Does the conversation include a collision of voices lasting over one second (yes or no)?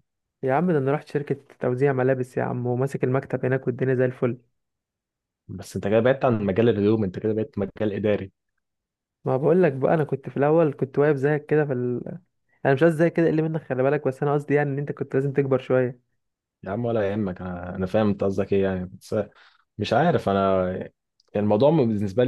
no